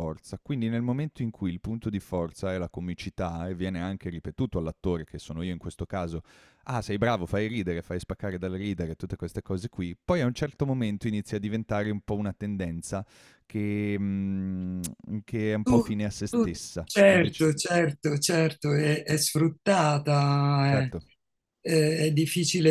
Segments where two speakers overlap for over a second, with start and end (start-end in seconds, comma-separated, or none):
15.6-17.5